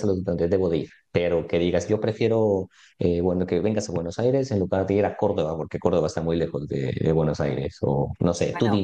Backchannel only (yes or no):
no